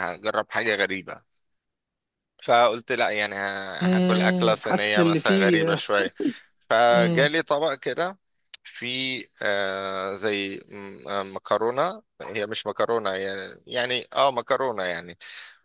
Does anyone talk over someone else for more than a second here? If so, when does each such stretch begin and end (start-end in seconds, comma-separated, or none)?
3.8-5.8